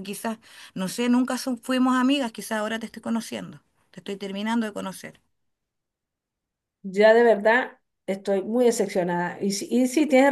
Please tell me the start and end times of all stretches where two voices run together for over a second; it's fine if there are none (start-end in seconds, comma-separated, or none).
none